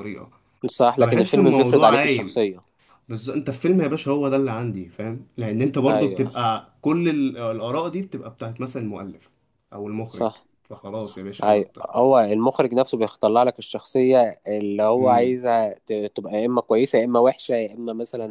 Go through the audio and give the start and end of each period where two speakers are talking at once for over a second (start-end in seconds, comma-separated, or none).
1.0-2.4